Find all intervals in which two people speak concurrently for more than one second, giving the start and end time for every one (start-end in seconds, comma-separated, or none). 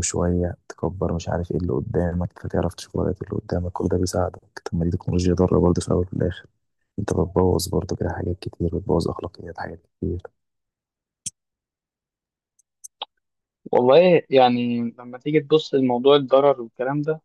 none